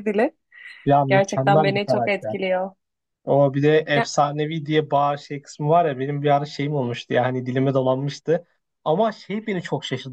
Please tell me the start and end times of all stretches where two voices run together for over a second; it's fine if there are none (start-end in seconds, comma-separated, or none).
1.1-2.4